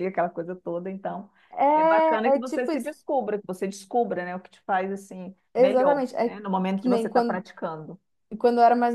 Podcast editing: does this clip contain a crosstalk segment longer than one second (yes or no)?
yes